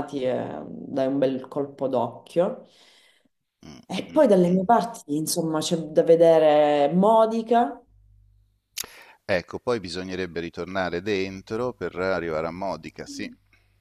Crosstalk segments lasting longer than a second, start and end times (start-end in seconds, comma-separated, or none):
none